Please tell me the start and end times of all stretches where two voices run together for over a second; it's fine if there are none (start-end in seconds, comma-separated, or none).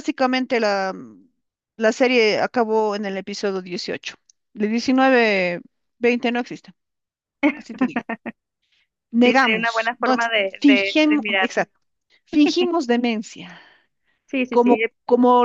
9.2-11.7